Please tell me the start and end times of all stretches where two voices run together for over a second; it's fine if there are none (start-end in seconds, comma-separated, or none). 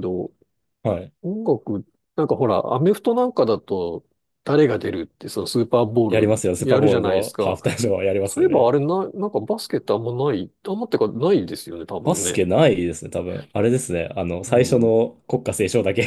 6.1-7.6